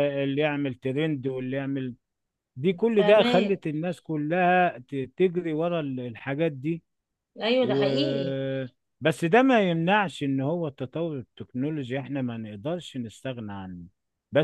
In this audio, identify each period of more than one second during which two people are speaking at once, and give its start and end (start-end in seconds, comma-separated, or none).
none